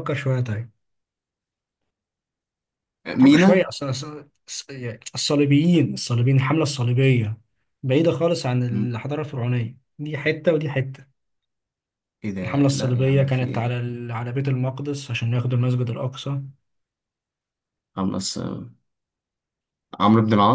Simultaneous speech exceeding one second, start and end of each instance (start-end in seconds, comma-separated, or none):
12.4-13.9